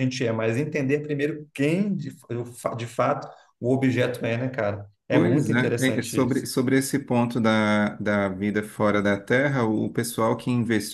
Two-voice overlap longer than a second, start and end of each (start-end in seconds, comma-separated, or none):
5.1-6.4